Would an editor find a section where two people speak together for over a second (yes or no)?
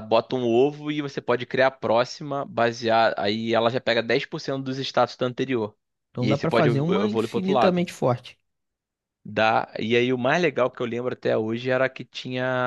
yes